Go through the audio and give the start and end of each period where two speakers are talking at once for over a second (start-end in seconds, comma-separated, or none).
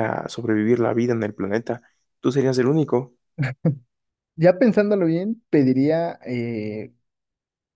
none